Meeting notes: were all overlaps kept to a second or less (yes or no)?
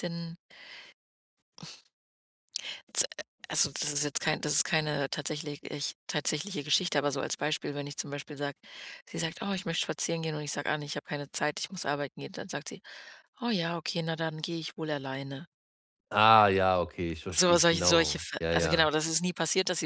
no